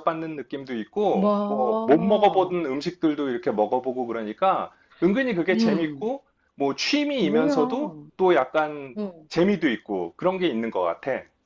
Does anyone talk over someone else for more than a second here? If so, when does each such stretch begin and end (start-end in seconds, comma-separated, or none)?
1.1-2.6